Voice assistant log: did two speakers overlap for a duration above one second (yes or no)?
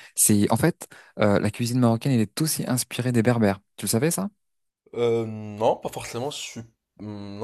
no